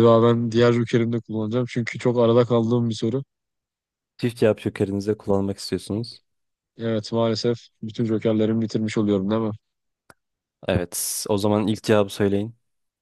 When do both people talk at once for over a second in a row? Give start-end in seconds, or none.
none